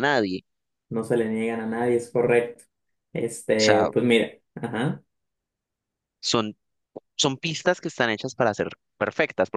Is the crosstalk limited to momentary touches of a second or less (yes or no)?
yes